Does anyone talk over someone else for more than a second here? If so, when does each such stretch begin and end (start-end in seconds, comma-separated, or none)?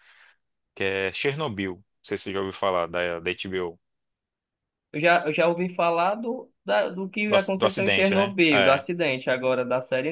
7.3-8.8